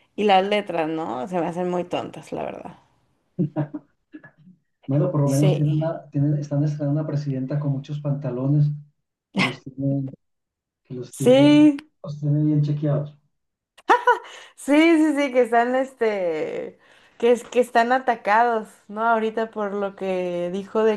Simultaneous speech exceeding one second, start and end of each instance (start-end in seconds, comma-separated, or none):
none